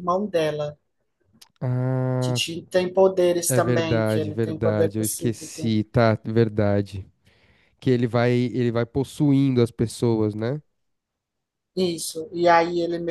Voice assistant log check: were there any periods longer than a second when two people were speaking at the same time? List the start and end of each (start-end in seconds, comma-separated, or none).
3.5-5.7